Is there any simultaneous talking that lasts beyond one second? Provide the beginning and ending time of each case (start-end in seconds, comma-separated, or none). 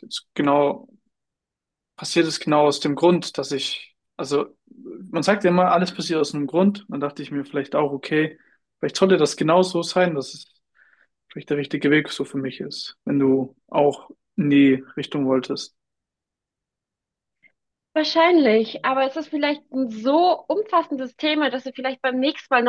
none